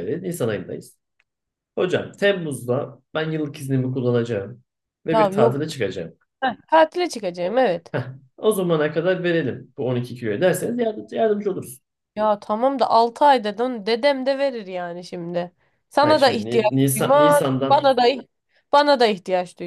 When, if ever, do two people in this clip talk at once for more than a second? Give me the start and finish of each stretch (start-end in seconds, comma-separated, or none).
16.0-17.9